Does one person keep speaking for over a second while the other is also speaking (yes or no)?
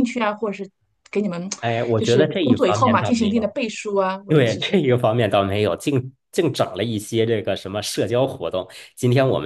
yes